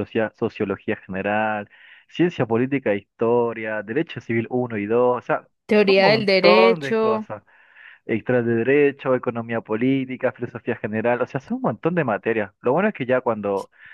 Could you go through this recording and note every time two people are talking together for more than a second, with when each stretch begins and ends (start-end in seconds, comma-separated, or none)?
5.7-7.3